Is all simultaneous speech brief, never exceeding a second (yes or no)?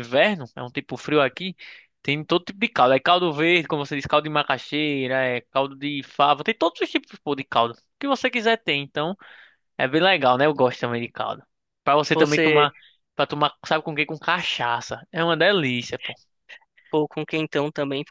yes